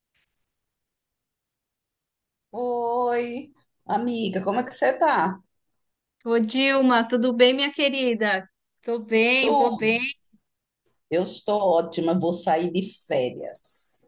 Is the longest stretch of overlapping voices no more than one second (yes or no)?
yes